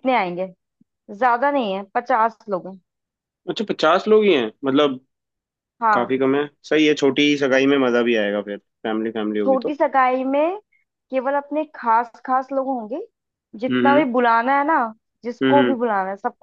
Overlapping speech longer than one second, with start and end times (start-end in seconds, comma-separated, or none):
none